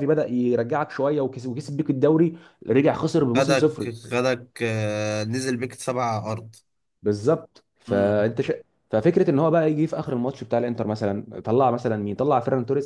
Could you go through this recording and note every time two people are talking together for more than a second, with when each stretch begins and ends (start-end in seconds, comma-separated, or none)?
none